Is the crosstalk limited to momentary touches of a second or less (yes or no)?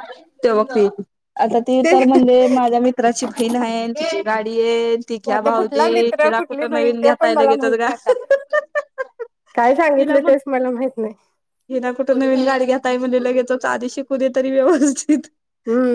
no